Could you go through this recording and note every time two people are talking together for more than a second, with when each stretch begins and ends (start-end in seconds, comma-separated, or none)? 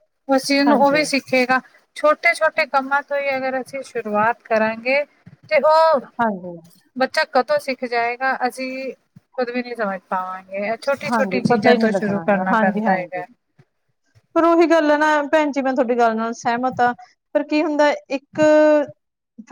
11.1-13.2